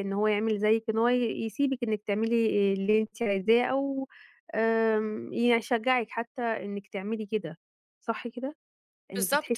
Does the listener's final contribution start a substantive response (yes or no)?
yes